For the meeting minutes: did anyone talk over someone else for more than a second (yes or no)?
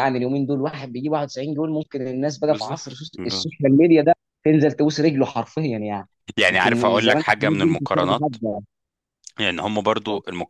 yes